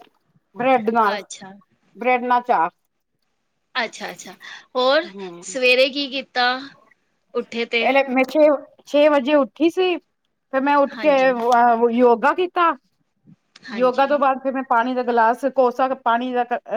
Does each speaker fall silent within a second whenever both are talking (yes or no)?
yes